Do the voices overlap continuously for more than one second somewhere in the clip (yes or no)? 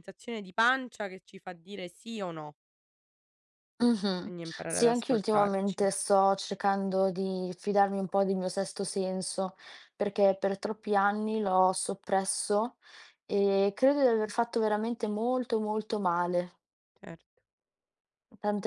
yes